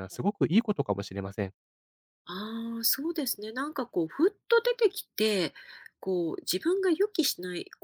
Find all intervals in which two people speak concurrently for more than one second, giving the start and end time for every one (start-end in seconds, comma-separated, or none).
none